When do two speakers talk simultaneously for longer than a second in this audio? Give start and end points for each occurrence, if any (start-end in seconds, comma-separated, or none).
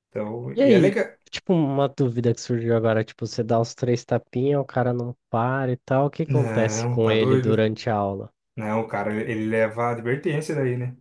6.3-7.6